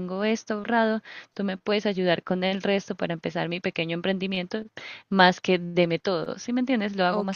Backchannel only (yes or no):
no